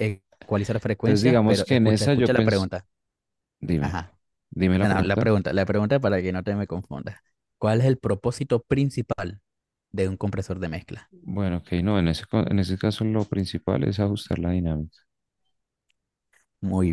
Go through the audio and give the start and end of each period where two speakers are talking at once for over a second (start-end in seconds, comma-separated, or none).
1.0-2.7